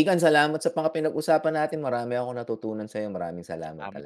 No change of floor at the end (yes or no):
no